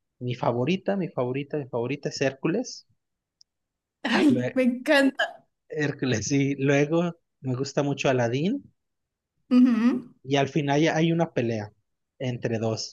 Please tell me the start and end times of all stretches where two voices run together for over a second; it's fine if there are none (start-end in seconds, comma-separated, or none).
none